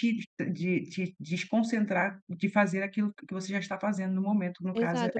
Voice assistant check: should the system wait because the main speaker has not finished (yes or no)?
no